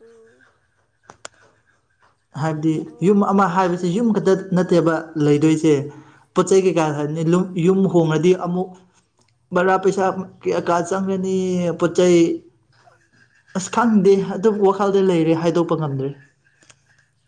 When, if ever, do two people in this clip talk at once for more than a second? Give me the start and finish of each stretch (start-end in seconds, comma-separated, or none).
2.4-4.8